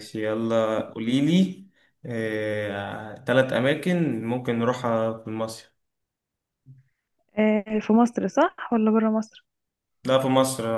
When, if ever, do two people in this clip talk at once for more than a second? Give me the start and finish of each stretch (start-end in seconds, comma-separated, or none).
none